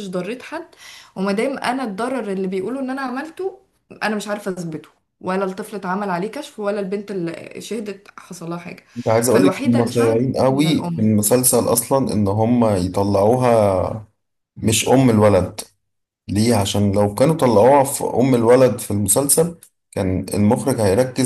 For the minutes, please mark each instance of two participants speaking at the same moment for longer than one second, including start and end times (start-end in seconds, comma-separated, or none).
9.3-11.1